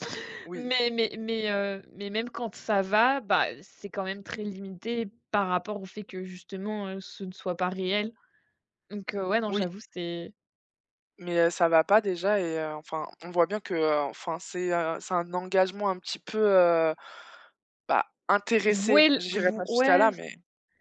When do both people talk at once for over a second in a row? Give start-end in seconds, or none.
18.7-20.1